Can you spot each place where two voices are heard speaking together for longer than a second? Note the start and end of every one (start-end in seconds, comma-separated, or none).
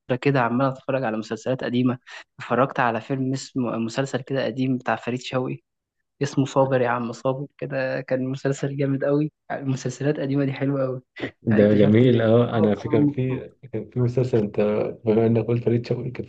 11.5-13.5